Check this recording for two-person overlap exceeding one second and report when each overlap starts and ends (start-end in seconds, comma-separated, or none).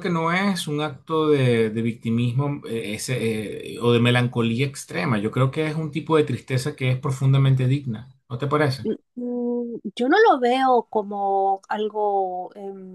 none